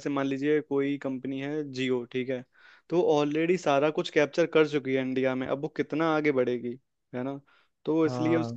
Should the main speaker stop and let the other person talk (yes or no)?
no